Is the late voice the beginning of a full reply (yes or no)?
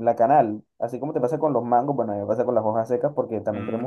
no